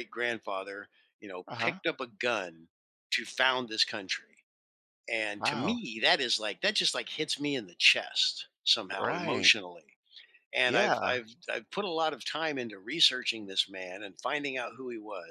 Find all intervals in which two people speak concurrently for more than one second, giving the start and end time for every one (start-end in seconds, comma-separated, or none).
none